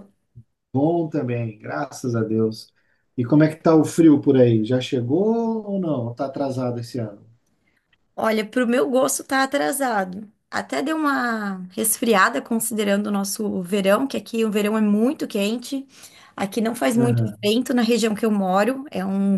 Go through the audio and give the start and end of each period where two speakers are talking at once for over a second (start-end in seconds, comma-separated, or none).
none